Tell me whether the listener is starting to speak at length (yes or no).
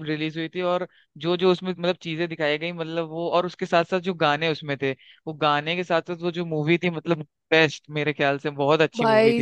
yes